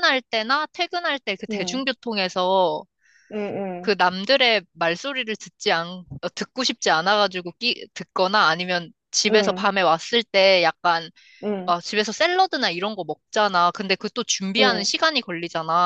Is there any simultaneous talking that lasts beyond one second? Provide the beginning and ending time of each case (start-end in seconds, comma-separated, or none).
none